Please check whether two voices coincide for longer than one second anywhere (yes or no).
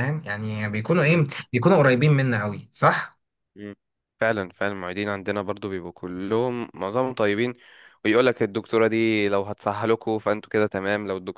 no